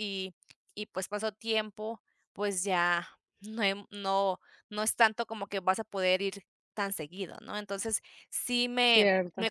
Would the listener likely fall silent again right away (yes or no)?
yes